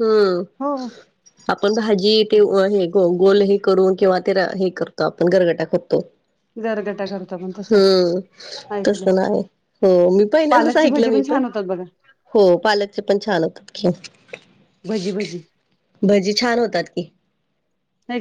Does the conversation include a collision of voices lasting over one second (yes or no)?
no